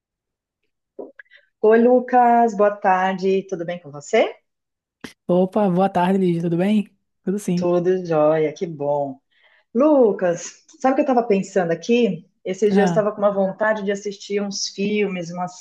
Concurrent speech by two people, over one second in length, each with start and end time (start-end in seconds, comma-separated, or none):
none